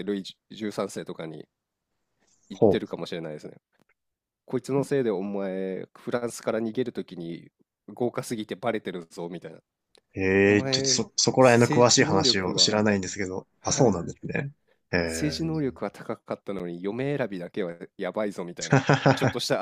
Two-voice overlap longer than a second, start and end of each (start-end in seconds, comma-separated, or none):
10.4-12.9